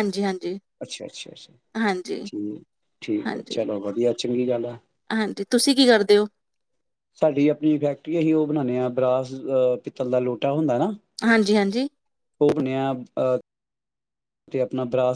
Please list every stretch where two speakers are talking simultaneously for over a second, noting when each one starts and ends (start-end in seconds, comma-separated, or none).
none